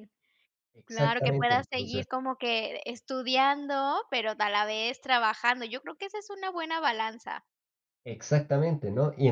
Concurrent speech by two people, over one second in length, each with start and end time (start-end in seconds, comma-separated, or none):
0.8-2.0